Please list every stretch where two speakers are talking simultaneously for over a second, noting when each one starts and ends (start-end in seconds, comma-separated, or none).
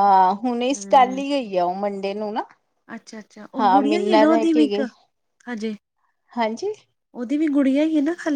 3.6-4.8